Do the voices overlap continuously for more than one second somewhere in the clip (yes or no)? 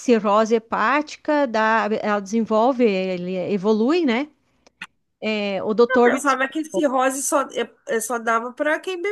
no